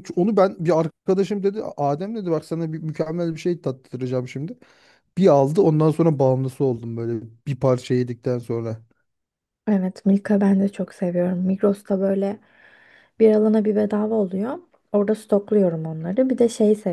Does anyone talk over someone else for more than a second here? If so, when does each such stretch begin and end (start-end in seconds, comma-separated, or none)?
none